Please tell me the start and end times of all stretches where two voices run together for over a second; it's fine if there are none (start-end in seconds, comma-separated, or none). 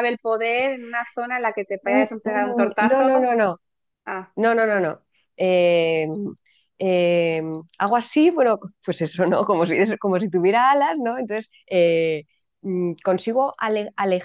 1.8-3.3